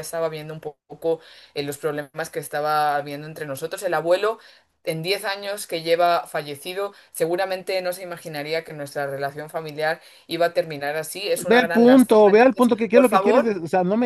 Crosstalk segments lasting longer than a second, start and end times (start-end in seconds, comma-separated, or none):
11.4-13.5